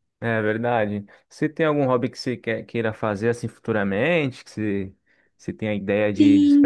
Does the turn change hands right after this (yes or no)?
yes